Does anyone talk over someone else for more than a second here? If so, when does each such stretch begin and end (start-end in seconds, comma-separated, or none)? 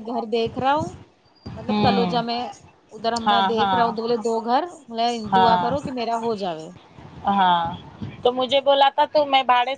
none